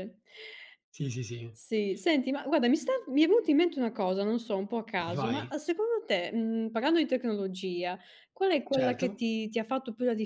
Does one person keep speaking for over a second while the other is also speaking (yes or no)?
no